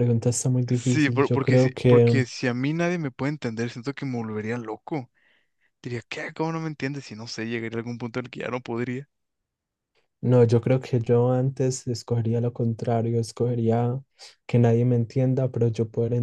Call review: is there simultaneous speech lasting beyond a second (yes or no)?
yes